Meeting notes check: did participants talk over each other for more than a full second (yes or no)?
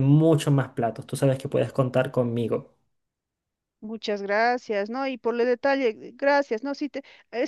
no